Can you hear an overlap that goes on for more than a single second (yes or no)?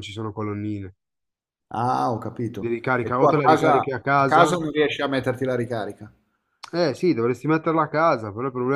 yes